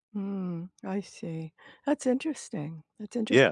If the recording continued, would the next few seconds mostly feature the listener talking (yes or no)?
yes